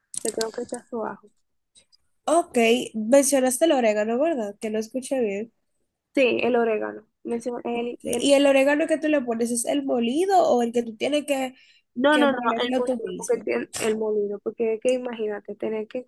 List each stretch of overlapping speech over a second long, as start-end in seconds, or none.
12.1-13.5